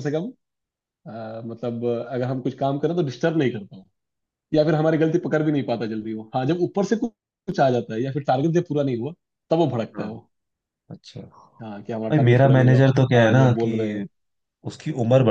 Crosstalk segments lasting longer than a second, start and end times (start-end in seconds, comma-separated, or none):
12.1-14.0